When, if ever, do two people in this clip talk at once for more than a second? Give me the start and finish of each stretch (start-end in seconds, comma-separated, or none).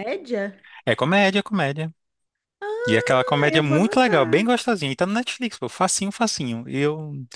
2.9-4.5